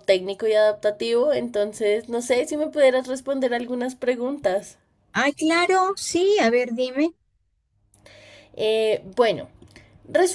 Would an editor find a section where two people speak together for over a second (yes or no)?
no